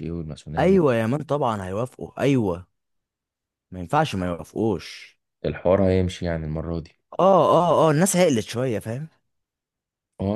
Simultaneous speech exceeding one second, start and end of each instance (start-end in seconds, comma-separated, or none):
none